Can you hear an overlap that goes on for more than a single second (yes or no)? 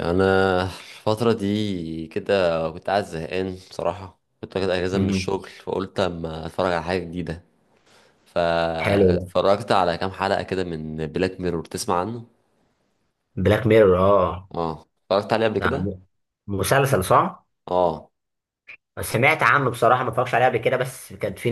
no